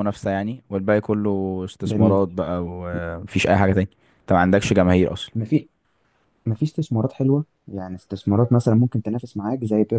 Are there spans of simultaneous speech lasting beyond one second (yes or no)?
no